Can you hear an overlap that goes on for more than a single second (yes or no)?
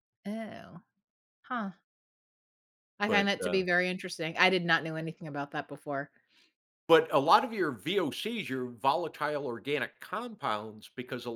no